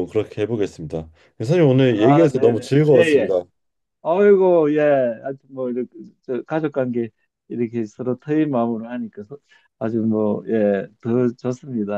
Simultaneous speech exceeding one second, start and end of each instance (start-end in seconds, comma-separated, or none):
2.0-3.3